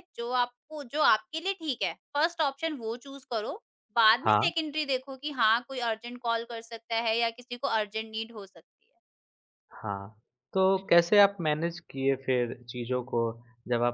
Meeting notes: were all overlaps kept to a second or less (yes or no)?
yes